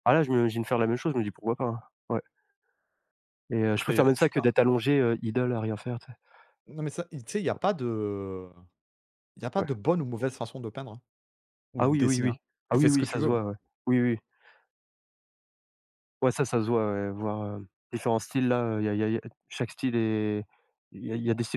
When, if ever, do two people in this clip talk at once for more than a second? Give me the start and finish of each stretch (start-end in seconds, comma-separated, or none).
11.8-13.4